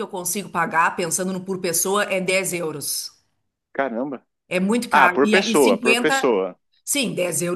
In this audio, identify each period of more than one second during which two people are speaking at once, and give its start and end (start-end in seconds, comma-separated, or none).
4.9-6.3